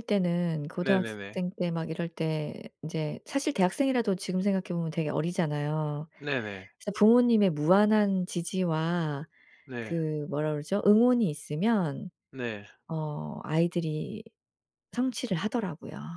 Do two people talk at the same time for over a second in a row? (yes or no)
no